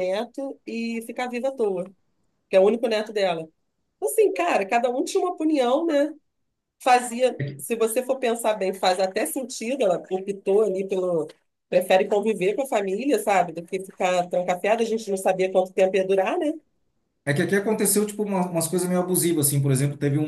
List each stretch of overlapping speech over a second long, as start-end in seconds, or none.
none